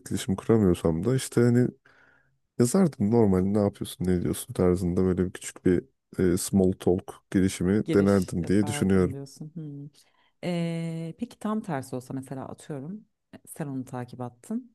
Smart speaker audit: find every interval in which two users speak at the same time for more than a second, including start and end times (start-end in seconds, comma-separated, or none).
7.8-9.2